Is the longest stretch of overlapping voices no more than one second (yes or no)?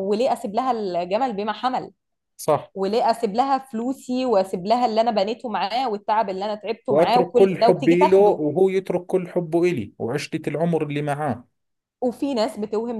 no